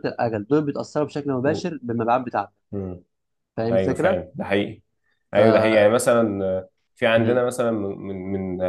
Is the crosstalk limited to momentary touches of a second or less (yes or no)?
yes